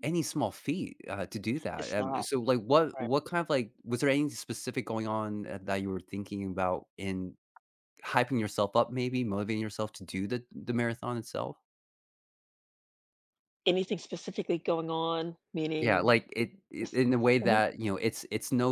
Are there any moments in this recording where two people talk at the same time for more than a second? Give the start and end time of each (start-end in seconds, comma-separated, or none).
none